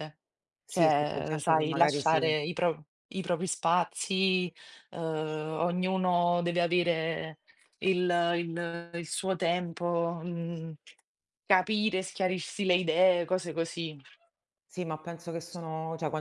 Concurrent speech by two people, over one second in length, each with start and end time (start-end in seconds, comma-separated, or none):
0.7-2.3